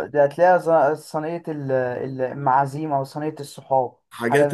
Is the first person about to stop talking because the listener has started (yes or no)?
yes